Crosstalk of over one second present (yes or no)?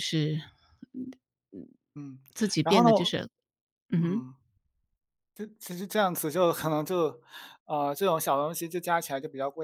no